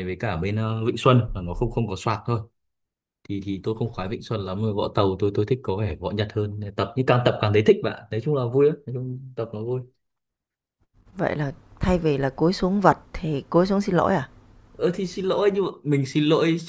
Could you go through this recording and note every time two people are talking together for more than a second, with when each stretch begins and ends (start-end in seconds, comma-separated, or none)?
none